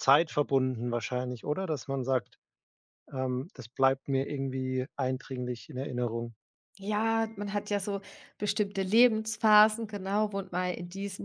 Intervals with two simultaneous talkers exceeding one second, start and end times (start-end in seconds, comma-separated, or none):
none